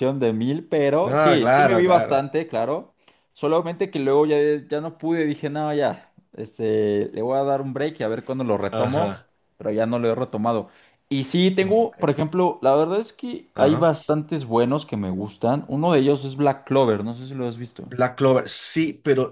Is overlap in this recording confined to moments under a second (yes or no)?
no